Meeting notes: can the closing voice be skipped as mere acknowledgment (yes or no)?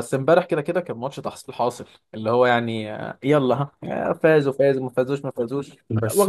no